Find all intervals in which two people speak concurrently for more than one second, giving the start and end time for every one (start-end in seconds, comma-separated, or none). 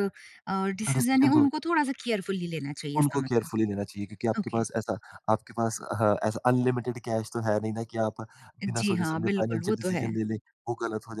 8.7-10.1